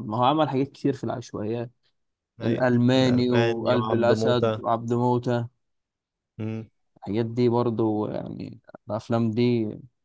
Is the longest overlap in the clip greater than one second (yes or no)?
yes